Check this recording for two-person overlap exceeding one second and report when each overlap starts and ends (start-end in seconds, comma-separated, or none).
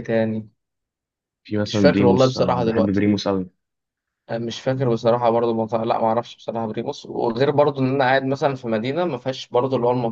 1.7-3.0